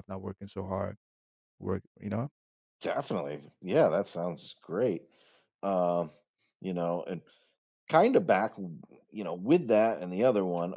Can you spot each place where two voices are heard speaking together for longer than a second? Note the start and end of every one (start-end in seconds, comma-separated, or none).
none